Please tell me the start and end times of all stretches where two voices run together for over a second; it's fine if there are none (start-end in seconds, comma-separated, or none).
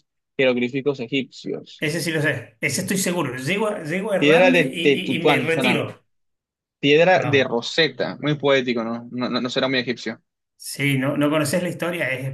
4.2-5.8